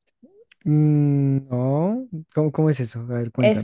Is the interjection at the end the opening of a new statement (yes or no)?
yes